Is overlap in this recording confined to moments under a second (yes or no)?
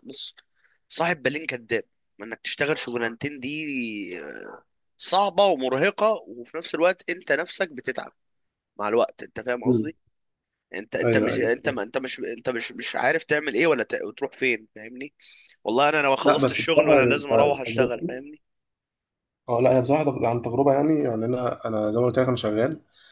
no